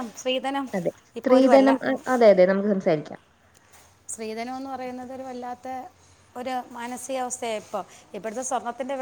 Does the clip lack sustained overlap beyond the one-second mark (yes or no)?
yes